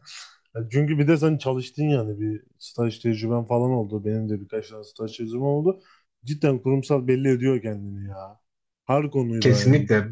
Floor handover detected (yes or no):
yes